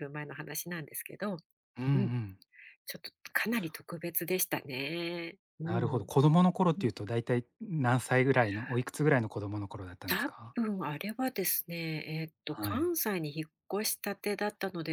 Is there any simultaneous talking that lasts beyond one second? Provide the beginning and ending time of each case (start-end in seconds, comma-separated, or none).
none